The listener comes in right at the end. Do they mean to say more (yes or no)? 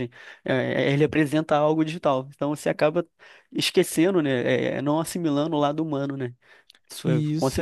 yes